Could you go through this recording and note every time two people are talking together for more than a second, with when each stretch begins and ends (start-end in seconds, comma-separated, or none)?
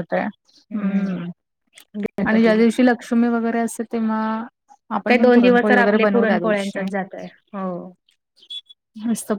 5.1-6.9